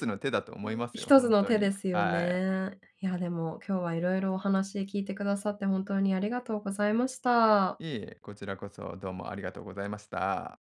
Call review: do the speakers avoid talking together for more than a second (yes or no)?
no